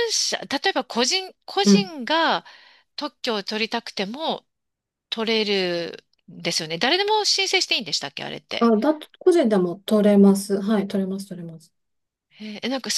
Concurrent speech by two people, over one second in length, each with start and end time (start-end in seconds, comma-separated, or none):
none